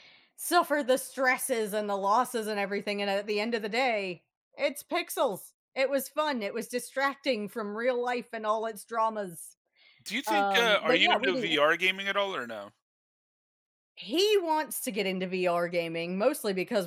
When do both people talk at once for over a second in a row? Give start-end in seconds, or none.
10.3-11.6